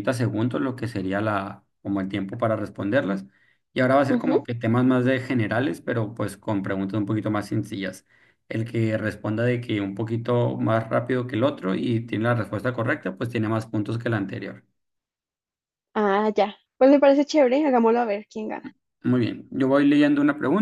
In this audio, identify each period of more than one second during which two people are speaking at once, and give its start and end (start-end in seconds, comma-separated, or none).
none